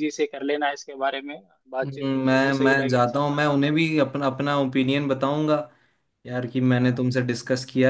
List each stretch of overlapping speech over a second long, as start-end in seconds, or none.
1.8-3.8